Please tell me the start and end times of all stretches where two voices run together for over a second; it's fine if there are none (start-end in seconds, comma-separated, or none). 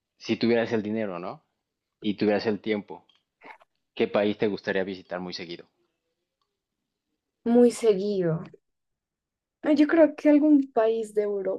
none